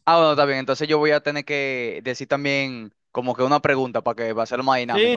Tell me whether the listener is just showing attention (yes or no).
no